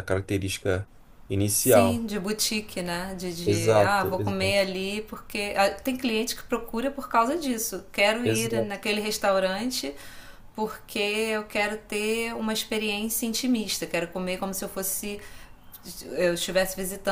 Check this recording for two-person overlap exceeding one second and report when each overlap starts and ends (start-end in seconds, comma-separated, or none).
3.4-4.7